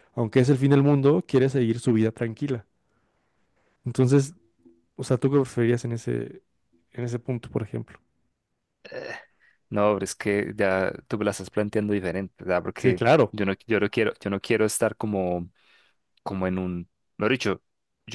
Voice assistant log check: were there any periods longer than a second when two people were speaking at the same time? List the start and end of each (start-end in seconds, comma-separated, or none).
none